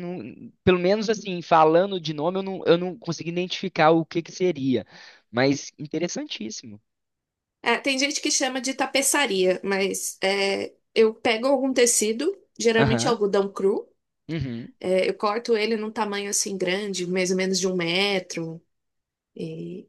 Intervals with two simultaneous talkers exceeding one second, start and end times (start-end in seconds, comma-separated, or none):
none